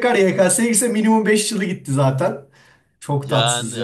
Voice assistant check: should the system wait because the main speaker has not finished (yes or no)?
no